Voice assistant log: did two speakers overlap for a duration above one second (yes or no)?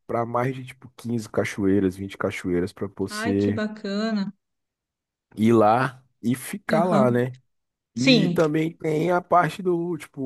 no